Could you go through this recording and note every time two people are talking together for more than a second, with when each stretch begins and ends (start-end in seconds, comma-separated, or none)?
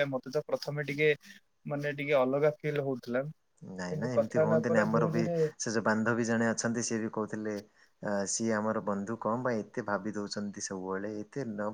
none